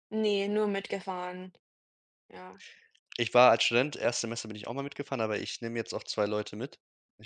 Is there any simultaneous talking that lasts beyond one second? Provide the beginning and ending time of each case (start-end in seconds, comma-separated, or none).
none